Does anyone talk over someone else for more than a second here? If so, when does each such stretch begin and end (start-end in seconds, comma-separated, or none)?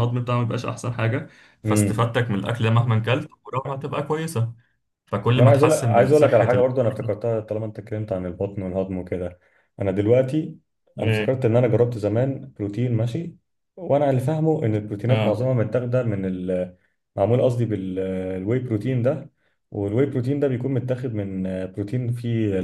5.3-6.7